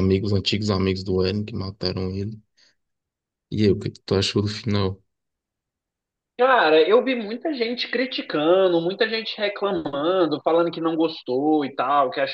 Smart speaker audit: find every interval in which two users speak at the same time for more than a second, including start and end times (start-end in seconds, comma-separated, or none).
none